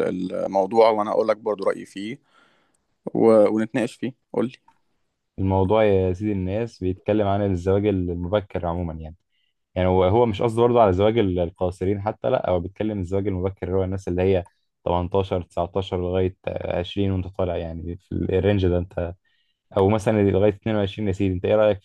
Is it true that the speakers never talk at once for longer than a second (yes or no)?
yes